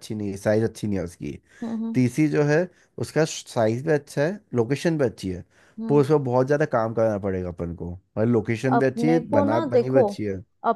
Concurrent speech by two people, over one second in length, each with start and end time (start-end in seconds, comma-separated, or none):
8.7-10.0